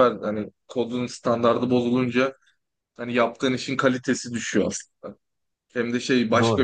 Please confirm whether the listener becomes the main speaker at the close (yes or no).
no